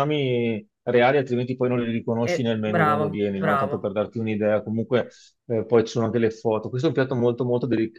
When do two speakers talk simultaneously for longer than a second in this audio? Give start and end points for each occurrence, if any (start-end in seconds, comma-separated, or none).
2.2-3.9